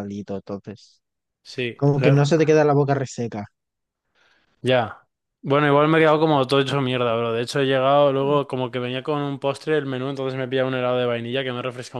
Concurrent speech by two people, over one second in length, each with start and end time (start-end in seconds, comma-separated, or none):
none